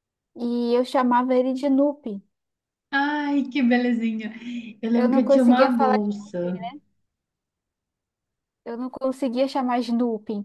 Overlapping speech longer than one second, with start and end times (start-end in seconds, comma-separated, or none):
4.9-6.6